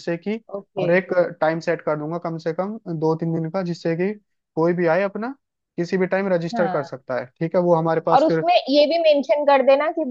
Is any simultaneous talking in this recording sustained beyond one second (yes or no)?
no